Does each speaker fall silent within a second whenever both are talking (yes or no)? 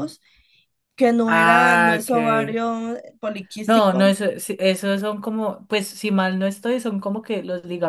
no